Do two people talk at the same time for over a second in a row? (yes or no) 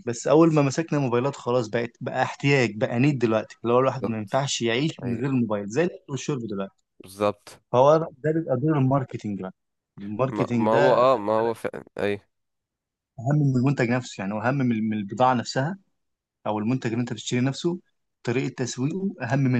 yes